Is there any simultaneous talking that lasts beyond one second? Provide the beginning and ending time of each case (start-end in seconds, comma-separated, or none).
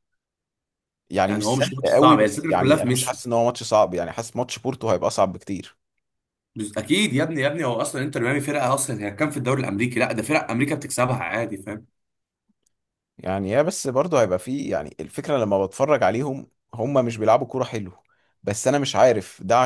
1.3-3.2